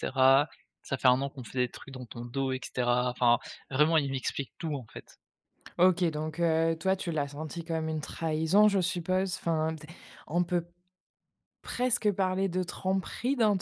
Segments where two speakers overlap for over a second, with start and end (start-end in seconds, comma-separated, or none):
none